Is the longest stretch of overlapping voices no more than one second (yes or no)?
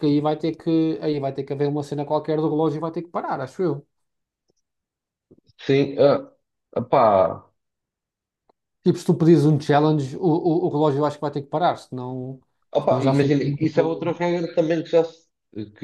no